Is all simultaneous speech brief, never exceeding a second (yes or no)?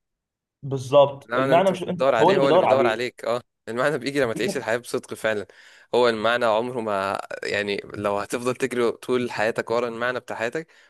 no